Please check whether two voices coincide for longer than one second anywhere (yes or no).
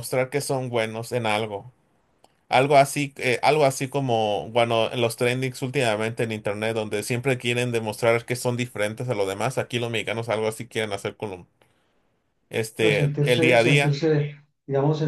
yes